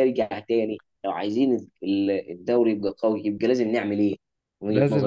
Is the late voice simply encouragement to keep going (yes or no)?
no